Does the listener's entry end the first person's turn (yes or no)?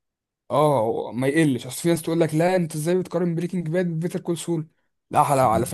no